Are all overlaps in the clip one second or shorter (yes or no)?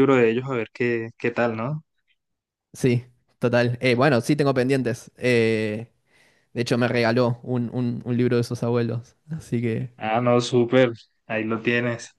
yes